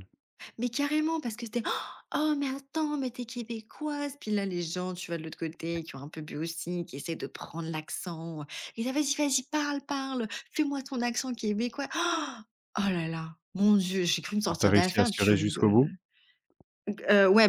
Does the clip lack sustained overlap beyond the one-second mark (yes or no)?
no